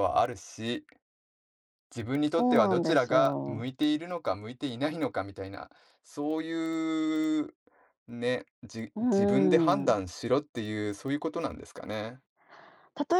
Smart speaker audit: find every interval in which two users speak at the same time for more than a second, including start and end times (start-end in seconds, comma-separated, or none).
2.3-3.6